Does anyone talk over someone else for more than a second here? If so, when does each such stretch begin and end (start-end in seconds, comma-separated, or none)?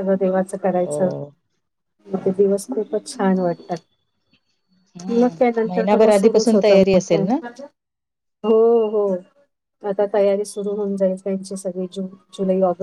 5.1-7.3